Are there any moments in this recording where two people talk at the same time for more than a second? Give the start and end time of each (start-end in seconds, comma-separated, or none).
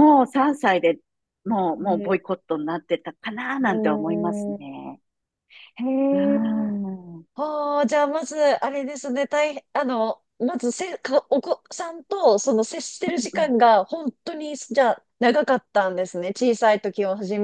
3.7-4.9